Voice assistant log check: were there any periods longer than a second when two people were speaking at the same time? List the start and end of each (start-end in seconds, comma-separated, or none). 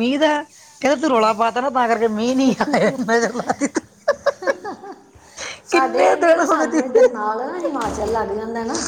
5.7-6.9